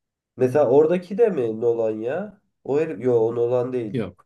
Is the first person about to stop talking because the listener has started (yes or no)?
no